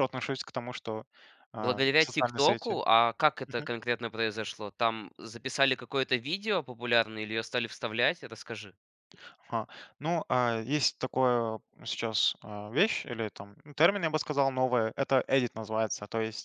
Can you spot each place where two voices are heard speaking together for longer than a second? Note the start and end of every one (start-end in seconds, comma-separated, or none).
1.6-2.8